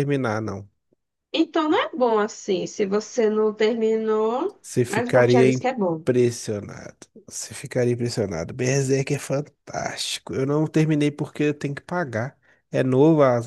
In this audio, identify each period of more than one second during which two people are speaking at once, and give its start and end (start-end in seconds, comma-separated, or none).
4.6-6.0